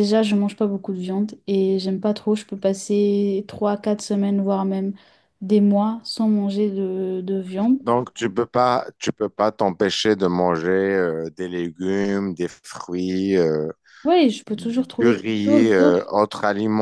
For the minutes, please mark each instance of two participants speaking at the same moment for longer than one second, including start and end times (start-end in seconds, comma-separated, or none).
14.5-16.1